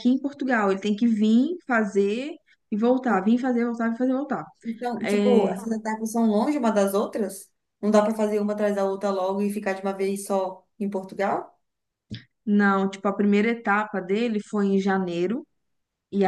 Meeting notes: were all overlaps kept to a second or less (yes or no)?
yes